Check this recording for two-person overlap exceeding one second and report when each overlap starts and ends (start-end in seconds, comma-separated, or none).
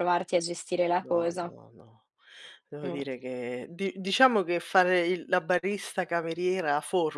none